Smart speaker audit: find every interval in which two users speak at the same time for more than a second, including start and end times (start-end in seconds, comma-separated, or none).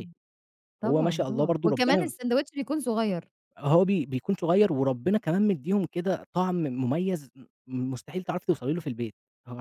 0.8-2.1